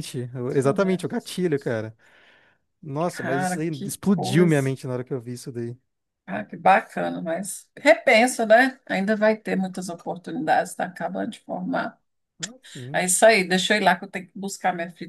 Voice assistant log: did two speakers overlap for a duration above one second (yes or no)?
yes